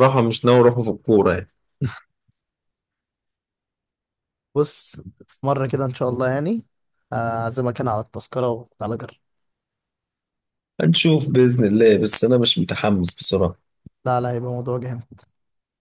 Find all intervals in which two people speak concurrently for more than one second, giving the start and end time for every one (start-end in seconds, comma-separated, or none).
none